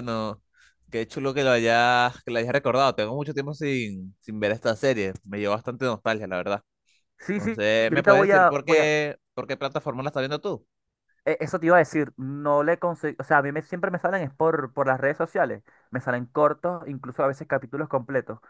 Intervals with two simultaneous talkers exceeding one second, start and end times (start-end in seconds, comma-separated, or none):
7.3-8.9